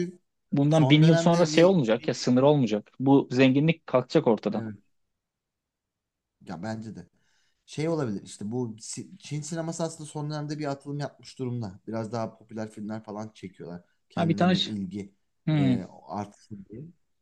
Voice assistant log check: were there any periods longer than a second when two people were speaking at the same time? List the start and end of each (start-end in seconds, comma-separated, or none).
0.7-2.2